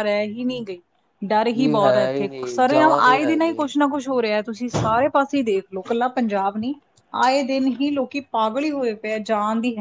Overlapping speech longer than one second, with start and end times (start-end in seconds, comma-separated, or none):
1.6-3.6